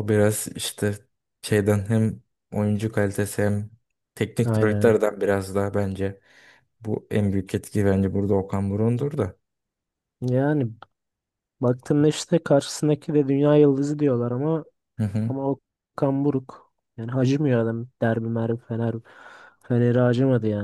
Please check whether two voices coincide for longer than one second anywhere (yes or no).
no